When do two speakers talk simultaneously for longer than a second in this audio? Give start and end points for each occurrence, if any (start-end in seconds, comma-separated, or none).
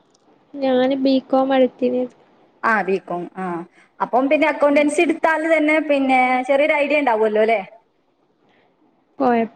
none